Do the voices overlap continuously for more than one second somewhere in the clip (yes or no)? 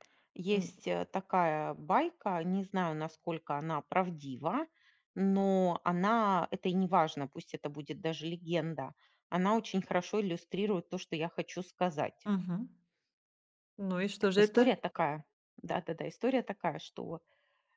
no